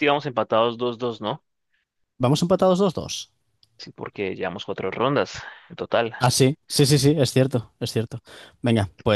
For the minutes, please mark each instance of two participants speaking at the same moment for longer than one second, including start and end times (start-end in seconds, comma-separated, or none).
none